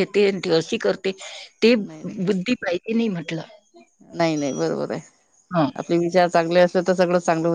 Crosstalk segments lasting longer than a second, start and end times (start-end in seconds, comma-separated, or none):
none